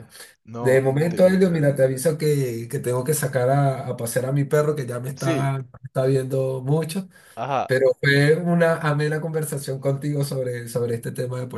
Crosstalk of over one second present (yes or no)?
yes